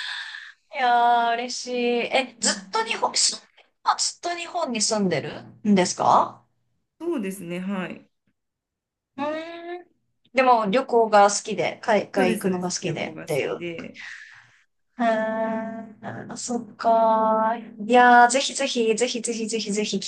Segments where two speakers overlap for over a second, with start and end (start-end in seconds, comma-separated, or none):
12.2-13.6